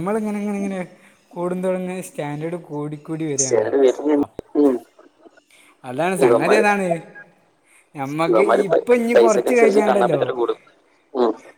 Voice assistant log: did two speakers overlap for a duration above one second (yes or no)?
yes